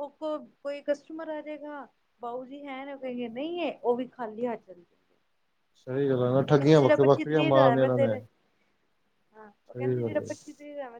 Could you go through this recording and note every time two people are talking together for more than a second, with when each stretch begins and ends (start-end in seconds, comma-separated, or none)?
6.5-8.2